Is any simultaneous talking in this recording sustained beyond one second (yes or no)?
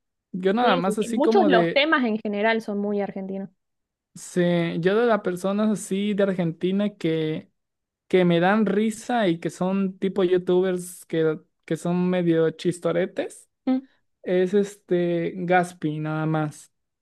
yes